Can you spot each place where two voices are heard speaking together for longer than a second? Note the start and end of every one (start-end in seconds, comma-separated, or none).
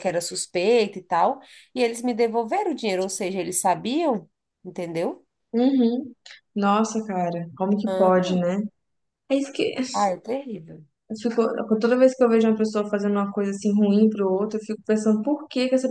none